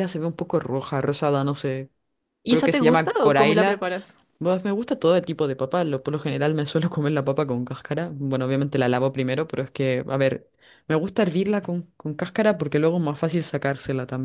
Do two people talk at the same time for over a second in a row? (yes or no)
yes